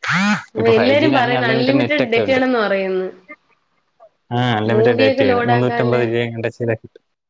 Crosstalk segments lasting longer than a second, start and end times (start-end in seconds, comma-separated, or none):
0.6-2.4, 4.7-6.0